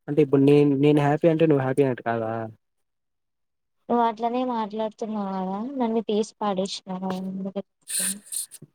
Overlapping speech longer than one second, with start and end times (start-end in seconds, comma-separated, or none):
none